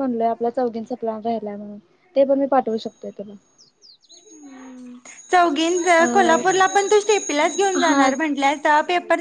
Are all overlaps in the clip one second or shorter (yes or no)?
yes